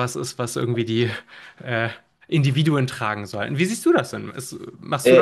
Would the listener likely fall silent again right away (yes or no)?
no